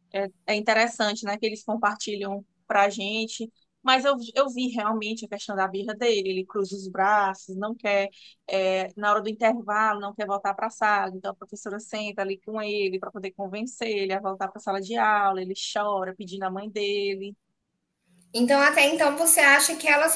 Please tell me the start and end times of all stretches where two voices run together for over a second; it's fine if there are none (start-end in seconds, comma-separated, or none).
none